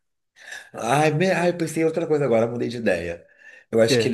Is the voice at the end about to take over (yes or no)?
no